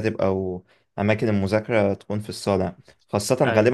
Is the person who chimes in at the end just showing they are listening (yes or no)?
yes